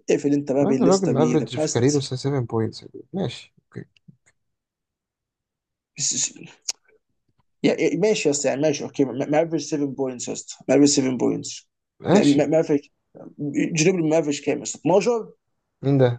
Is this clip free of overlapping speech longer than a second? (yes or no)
no